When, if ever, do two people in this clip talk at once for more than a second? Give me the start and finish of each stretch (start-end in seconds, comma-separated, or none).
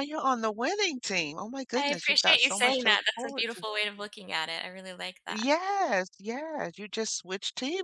1.8-3.6